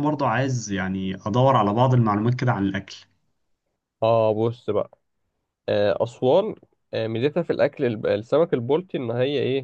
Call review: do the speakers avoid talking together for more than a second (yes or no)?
yes